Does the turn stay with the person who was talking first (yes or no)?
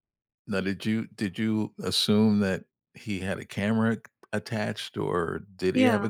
yes